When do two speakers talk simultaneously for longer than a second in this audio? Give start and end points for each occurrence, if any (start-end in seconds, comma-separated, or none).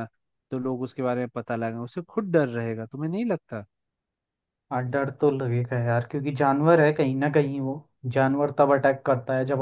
none